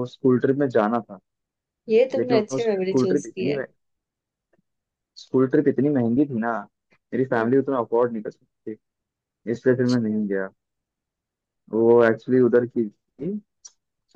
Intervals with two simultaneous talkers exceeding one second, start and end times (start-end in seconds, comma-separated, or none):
2.2-3.5